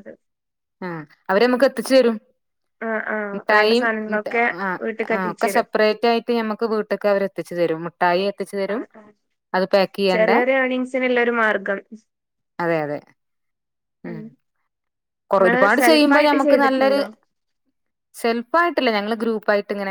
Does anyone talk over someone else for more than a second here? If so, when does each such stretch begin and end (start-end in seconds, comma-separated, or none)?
15.4-17.0